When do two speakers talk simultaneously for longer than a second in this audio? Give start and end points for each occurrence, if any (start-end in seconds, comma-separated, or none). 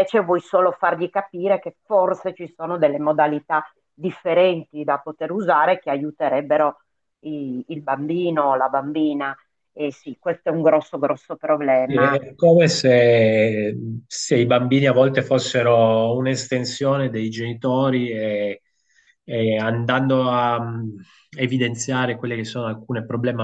none